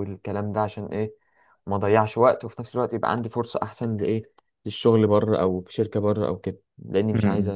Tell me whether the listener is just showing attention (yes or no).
no